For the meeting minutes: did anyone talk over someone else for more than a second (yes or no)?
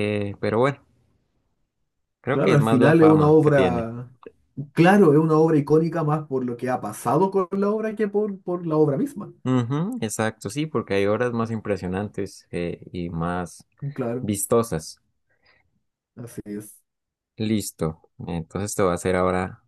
yes